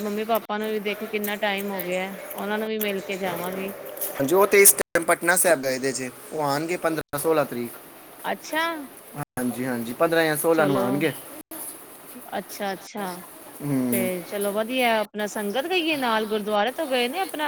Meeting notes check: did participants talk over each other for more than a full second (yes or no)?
no